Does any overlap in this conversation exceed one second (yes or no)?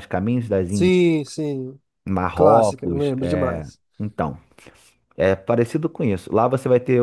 yes